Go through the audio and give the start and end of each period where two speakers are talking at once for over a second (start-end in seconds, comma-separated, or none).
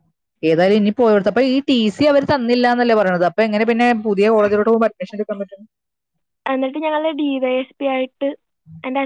none